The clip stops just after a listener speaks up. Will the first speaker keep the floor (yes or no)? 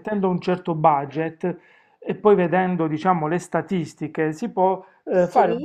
yes